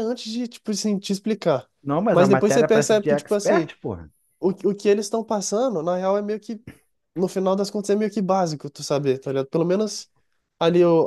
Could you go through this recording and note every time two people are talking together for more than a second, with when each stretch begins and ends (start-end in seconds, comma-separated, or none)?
2.1-3.7